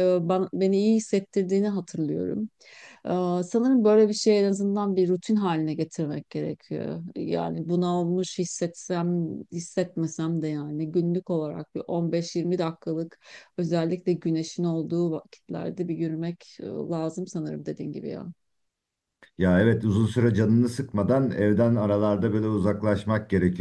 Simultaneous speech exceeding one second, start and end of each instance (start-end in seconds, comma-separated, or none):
none